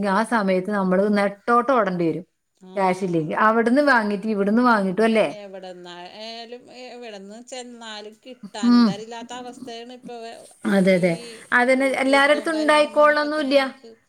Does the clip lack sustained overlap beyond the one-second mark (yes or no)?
no